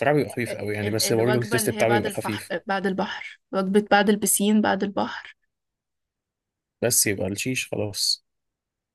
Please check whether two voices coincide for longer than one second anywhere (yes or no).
yes